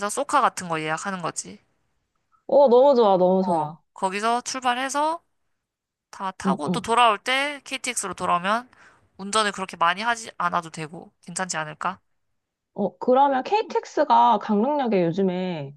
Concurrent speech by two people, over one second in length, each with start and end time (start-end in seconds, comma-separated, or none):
none